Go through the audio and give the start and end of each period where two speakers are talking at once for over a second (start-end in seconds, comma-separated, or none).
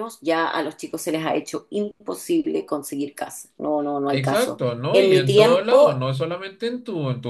4.1-5.9